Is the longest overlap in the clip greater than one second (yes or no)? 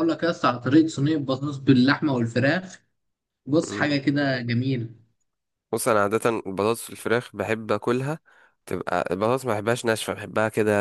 no